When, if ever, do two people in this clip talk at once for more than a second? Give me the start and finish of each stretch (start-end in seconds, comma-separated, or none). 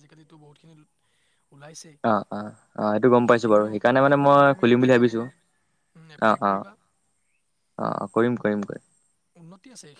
3.3-5.2